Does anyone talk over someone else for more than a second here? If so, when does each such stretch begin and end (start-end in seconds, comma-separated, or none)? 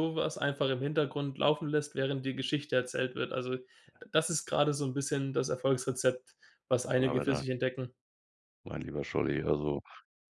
none